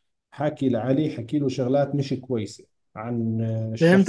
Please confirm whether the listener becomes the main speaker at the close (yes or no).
yes